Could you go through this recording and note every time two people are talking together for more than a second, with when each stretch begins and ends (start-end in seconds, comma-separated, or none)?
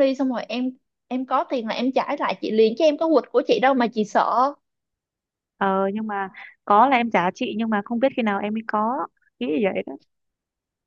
none